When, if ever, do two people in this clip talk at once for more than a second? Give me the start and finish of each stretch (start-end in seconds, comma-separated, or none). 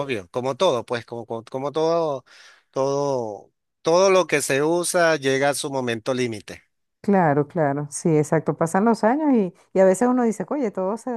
none